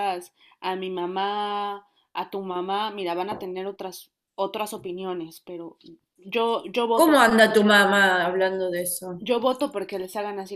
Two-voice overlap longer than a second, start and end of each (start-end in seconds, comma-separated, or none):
none